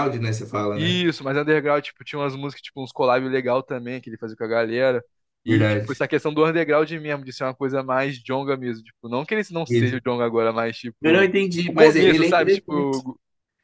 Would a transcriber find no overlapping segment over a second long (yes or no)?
no